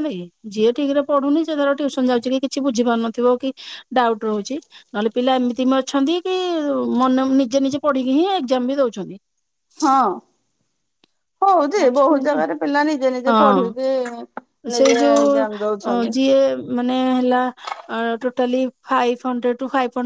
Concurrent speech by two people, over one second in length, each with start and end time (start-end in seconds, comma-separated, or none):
14.7-16.1